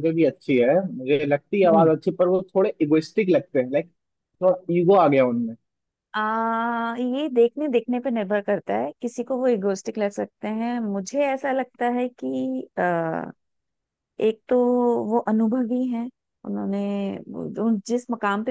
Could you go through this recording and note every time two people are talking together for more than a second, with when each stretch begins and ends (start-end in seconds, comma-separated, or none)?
none